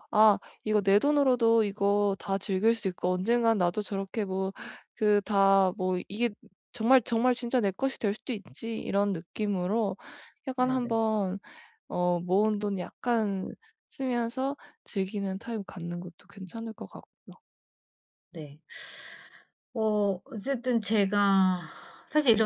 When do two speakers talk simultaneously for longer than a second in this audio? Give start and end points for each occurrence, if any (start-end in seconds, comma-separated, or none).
none